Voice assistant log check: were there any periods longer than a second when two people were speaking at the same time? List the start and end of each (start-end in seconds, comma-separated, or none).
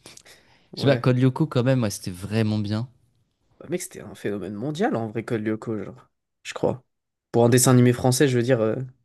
none